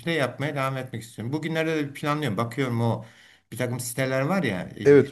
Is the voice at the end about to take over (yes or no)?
no